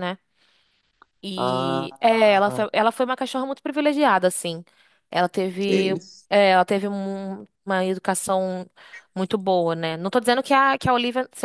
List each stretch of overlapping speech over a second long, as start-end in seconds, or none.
1.4-2.6